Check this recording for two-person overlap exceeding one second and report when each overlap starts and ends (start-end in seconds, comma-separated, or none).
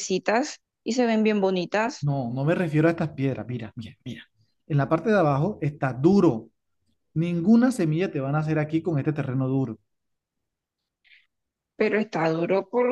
none